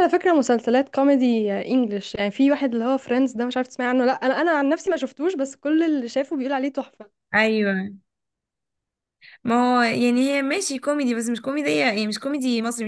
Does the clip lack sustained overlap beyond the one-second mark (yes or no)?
yes